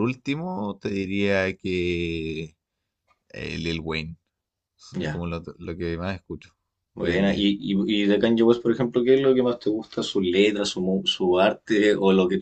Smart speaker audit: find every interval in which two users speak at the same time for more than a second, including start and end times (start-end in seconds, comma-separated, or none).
none